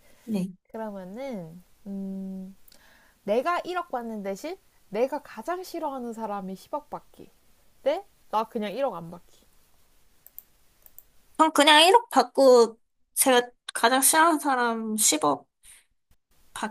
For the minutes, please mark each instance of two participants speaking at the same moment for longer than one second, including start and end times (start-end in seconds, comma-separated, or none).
none